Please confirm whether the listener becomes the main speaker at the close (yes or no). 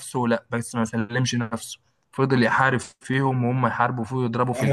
yes